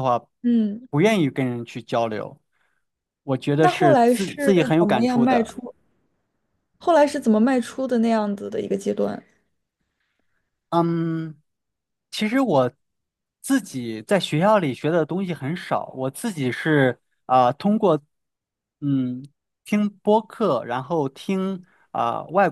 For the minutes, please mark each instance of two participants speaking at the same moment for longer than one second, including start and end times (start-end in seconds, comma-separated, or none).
3.6-5.6